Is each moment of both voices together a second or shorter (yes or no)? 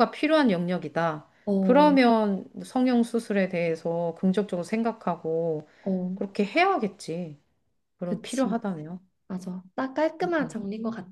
yes